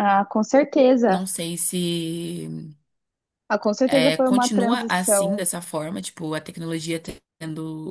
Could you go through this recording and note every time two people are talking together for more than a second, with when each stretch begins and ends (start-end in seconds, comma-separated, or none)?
3.8-5.5